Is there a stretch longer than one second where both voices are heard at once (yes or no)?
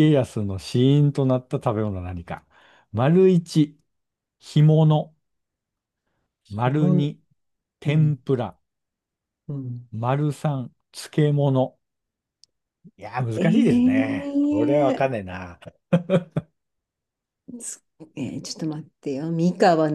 yes